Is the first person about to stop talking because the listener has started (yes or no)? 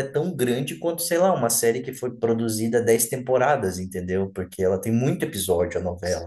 yes